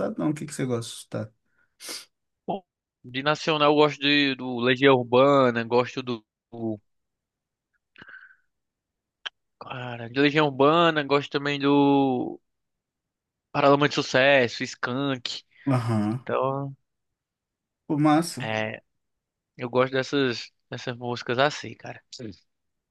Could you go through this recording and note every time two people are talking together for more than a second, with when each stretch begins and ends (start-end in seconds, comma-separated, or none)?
none